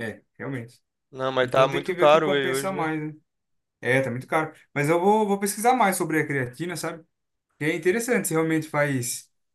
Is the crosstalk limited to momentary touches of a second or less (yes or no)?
no